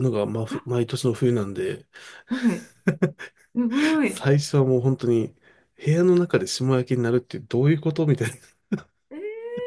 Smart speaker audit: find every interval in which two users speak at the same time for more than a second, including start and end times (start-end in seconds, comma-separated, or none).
none